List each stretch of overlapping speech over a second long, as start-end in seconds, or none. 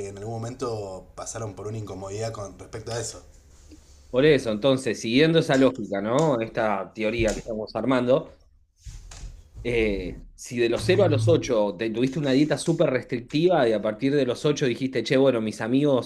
none